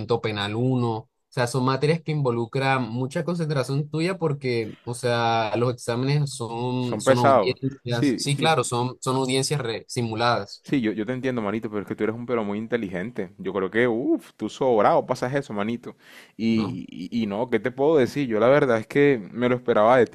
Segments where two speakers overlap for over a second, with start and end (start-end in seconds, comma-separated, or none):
6.8-8.5